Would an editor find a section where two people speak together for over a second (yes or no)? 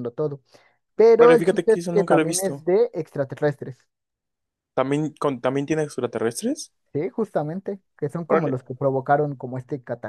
yes